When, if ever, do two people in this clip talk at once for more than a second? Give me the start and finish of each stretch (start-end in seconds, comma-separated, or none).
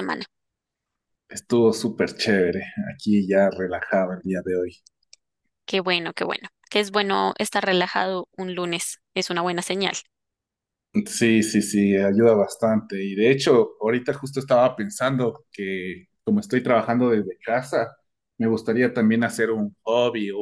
none